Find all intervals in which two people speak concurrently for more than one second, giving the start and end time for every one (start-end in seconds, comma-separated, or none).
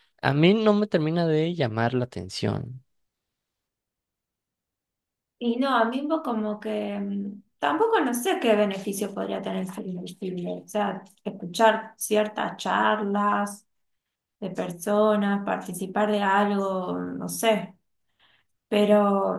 none